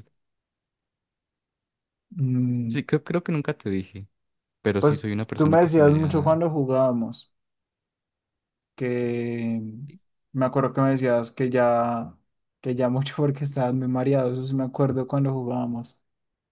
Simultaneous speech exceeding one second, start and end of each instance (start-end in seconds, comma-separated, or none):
4.8-6.4